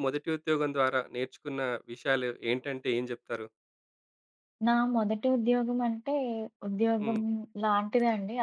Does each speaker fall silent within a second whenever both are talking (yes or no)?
yes